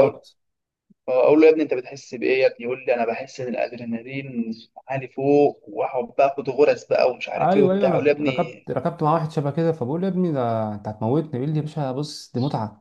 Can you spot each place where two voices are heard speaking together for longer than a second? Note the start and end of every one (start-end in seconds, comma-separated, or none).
7.4-8.7